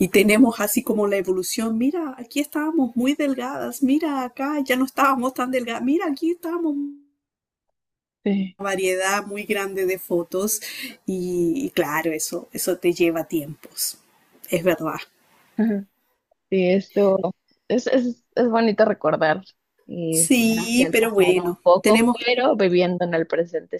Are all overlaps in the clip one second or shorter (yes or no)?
no